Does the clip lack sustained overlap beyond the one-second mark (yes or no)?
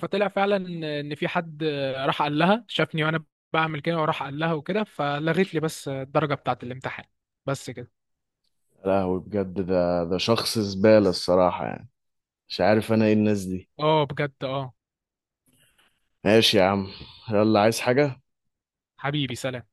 yes